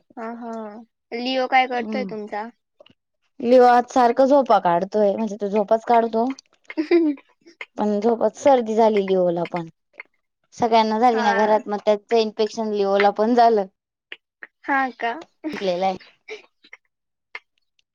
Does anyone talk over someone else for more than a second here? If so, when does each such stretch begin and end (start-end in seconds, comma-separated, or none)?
none